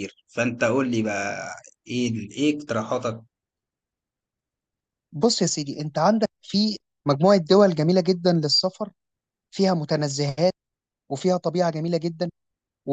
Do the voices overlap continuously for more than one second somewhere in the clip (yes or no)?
no